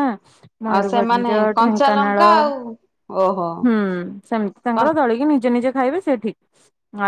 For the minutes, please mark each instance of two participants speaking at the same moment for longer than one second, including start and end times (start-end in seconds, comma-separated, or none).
0.7-2.3